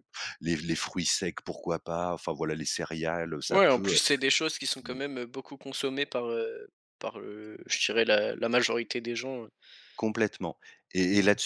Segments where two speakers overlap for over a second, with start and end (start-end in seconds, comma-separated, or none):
none